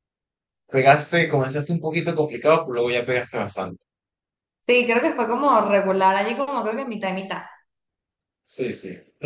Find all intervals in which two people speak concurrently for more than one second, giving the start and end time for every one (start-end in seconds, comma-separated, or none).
none